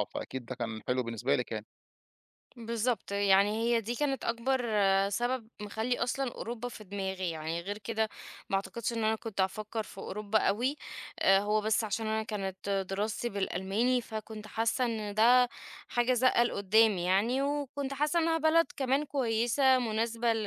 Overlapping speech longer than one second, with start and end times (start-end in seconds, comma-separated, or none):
none